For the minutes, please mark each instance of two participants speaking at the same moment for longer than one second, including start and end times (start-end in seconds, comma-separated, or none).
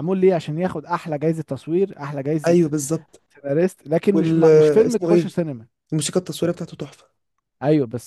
4.1-5.3